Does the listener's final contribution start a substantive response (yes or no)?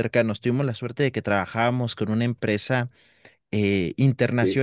no